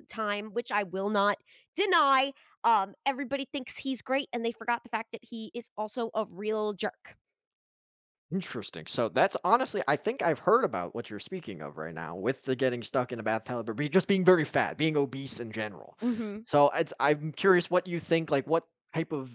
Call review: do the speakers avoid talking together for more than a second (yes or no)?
yes